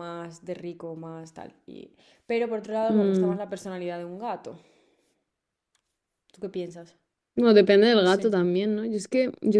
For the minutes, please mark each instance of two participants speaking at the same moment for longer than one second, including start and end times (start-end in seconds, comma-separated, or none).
none